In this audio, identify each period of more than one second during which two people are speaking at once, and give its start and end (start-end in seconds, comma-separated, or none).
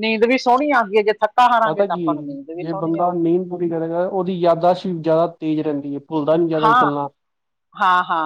1.6-3.3